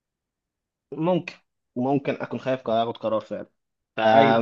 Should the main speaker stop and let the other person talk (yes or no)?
no